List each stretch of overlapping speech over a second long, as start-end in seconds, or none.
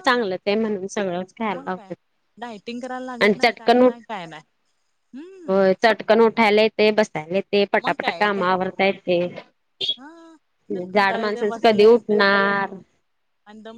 10.9-12.2